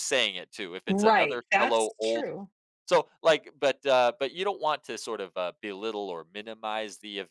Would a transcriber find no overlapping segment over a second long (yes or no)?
no